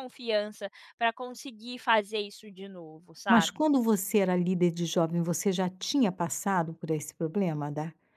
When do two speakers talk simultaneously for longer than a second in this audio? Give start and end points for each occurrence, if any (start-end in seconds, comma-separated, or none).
none